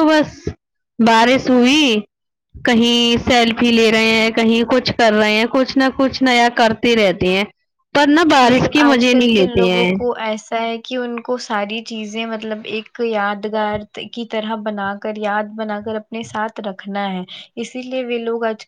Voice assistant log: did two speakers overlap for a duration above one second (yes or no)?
yes